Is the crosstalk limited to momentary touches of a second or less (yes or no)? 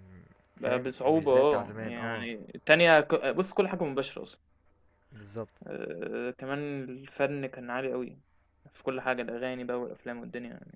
no